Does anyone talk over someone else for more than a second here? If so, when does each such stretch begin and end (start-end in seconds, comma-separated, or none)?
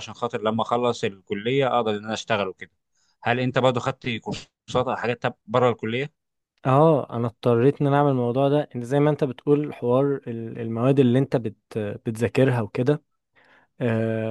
none